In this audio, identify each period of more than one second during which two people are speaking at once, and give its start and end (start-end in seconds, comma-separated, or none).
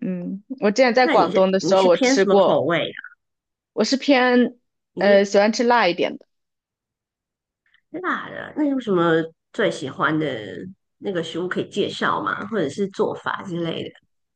1.0-2.6